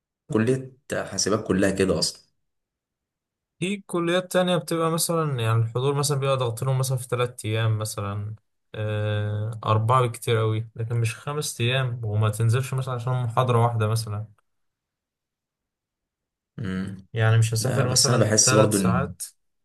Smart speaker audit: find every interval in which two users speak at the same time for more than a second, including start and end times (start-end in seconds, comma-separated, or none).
17.6-19.1